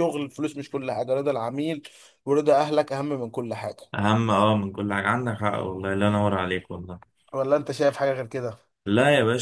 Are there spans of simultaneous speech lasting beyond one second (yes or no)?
no